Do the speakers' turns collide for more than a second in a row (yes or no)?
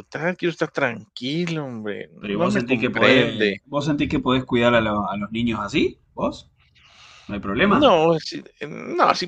yes